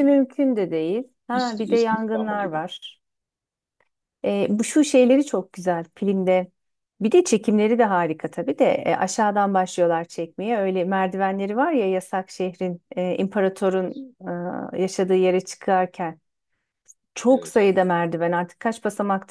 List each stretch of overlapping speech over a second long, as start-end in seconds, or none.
1.3-2.6